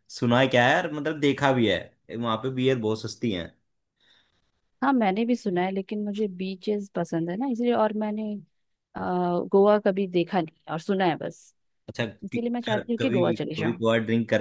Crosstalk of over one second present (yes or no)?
yes